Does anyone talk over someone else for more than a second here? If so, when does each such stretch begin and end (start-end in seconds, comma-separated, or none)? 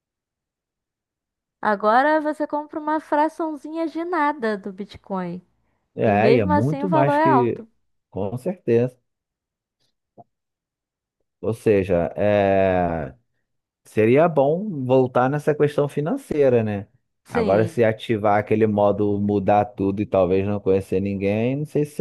6.0-7.7